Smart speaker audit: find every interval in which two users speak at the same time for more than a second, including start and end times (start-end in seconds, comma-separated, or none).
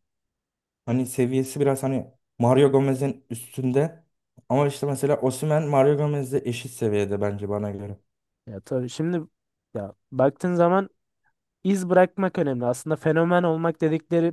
none